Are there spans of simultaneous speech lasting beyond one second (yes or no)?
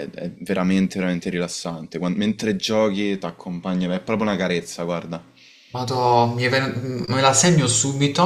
no